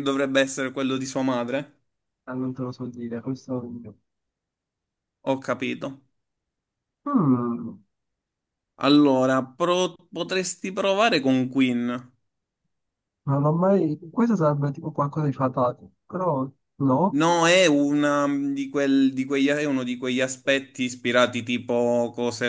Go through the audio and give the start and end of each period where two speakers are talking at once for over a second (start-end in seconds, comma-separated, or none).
none